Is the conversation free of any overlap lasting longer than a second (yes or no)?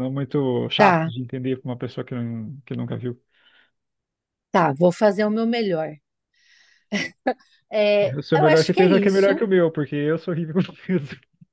no